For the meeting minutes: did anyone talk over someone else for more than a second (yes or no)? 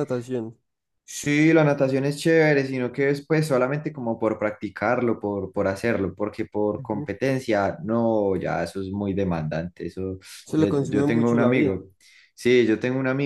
yes